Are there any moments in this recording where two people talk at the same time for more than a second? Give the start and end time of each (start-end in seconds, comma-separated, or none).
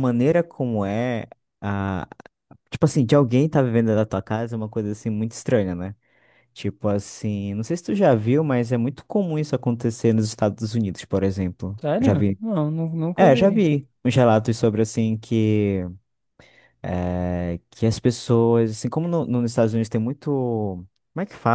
none